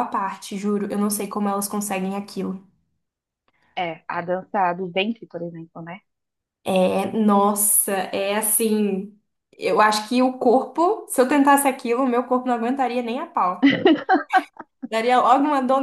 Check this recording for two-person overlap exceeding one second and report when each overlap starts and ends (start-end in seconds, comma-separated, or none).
none